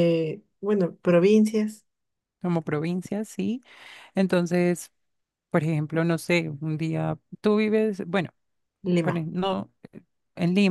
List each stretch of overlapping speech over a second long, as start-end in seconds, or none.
none